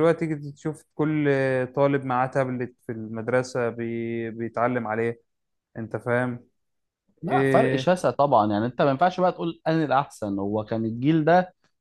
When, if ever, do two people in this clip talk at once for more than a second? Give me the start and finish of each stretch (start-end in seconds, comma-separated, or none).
none